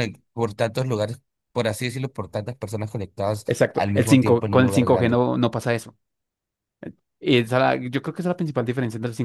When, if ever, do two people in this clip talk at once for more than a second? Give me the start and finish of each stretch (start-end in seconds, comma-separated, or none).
3.5-5.2